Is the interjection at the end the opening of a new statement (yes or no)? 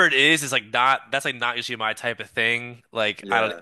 no